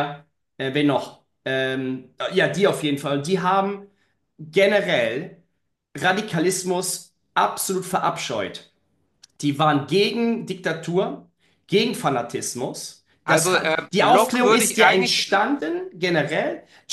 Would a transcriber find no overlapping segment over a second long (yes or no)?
no